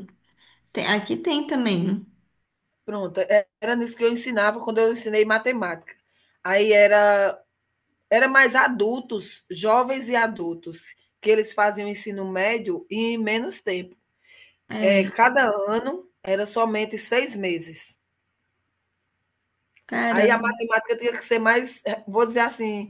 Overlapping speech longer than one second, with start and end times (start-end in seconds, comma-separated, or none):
none